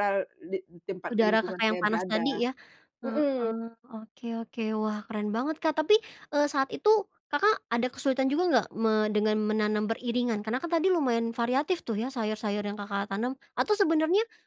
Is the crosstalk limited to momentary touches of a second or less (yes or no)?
no